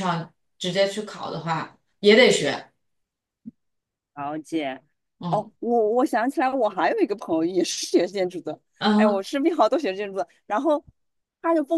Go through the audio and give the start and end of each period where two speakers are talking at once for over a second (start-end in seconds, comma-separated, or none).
none